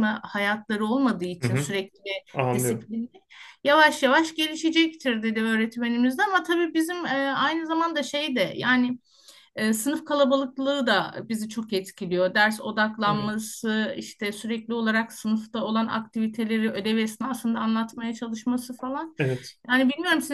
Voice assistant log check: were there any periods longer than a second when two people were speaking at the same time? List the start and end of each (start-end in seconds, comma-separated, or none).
none